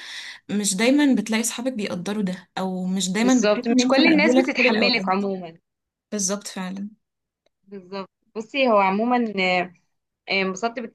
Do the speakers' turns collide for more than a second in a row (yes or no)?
yes